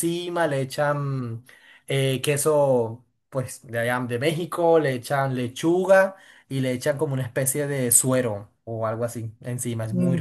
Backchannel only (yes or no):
no